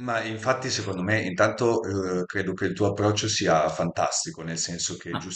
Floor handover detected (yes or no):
no